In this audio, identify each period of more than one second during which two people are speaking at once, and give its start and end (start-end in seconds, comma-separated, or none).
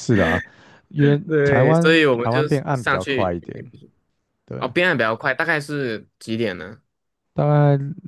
1.3-3.4